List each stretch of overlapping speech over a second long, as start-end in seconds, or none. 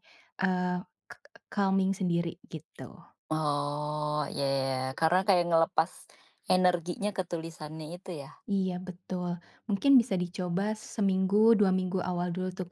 none